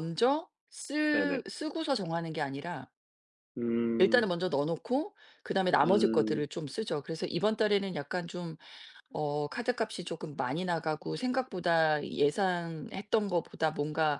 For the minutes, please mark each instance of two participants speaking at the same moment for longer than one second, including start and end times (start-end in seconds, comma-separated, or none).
none